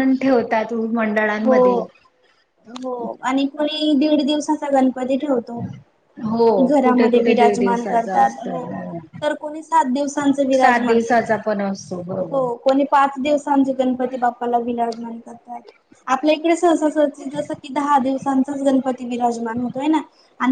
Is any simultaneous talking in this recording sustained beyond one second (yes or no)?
yes